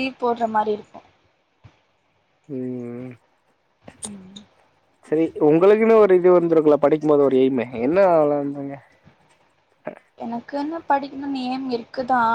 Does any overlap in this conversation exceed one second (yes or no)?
no